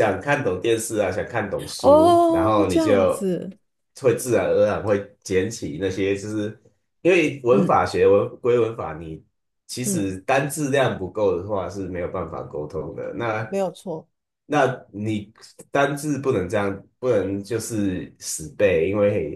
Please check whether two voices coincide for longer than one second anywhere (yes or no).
yes